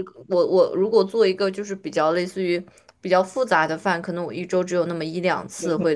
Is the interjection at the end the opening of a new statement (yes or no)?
yes